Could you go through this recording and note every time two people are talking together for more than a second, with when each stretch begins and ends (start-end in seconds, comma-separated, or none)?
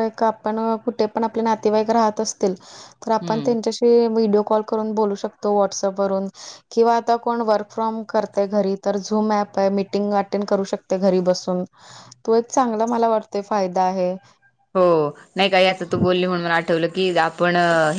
none